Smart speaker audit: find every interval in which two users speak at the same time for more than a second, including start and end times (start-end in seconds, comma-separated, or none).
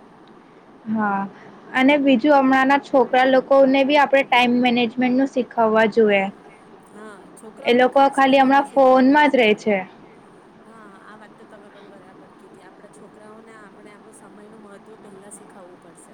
7.6-9.6